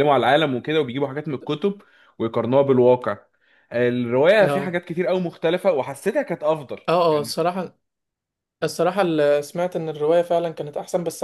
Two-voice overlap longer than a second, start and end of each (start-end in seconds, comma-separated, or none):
none